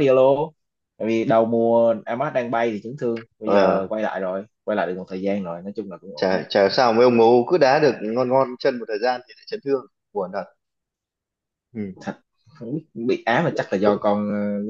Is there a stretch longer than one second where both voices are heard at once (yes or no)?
no